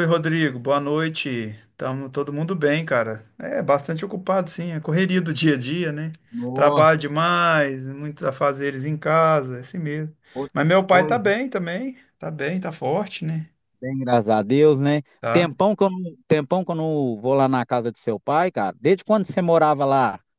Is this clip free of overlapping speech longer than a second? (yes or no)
yes